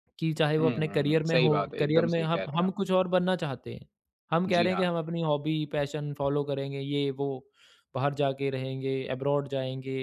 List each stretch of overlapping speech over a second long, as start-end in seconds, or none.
0.6-2.8